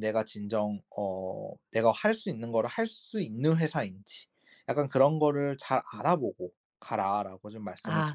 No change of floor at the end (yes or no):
no